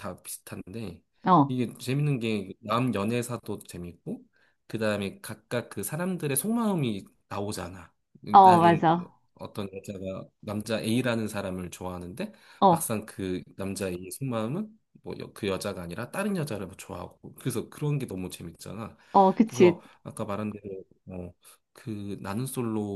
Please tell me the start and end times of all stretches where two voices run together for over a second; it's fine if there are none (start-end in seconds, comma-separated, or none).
none